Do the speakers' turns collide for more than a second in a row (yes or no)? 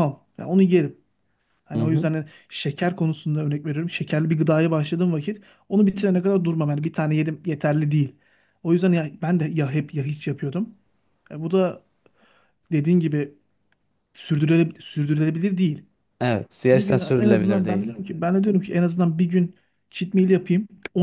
yes